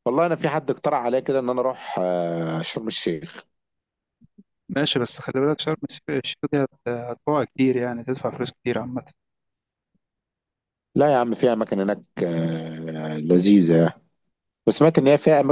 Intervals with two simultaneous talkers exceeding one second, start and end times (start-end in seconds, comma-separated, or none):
none